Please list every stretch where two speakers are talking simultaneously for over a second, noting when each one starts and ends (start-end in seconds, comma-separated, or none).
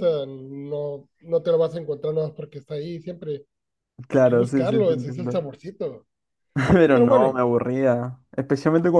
4.1-5.4